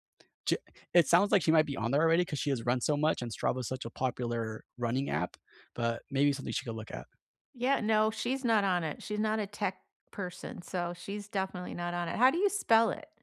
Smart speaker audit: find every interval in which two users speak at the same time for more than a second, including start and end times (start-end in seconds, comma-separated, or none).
none